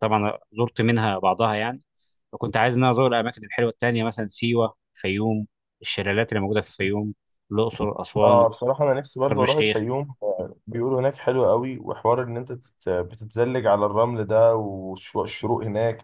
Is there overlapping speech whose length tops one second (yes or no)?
no